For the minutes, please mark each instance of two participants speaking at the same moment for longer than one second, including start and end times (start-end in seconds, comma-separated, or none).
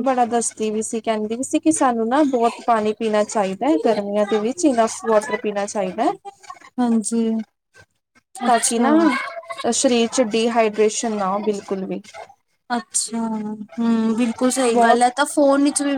none